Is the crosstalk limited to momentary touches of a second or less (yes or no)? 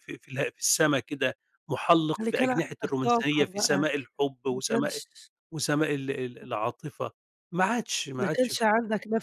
no